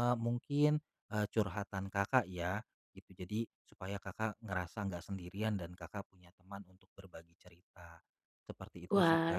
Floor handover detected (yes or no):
yes